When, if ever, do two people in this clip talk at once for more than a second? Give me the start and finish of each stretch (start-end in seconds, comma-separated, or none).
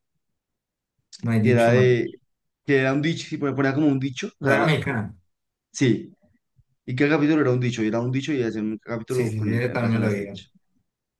9.1-10.4